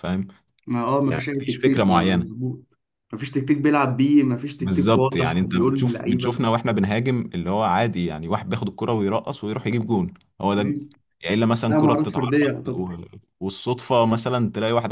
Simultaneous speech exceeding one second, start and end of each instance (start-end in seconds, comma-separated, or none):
1.1-2.3, 4.6-6.4, 11.7-13.0